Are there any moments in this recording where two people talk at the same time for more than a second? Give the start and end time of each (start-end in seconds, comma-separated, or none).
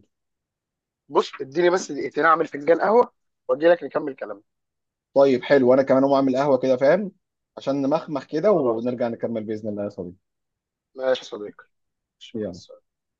none